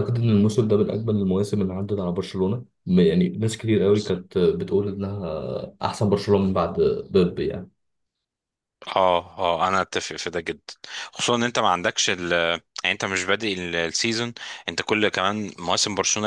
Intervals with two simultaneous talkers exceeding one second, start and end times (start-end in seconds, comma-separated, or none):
none